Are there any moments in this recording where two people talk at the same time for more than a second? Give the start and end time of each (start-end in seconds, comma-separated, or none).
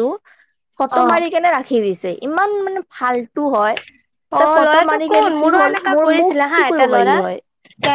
4.4-7.2